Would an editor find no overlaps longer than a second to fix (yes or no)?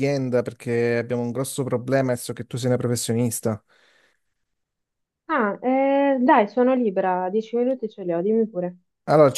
yes